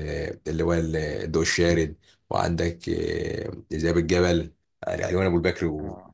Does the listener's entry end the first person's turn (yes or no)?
no